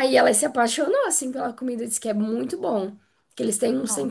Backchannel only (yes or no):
yes